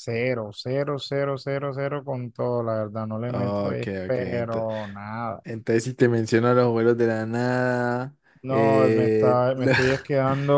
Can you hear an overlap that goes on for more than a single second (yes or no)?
yes